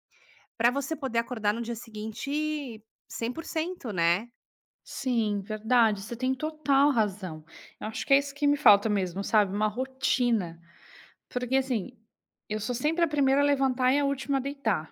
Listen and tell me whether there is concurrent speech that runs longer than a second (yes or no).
no